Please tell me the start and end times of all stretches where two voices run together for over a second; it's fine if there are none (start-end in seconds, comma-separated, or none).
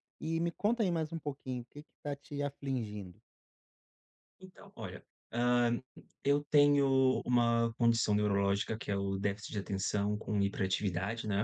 none